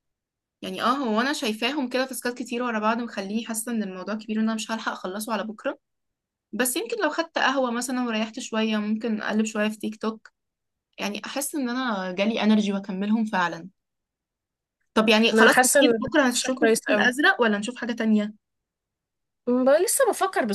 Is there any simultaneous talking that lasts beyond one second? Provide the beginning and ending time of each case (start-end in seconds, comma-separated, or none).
15.3-17.1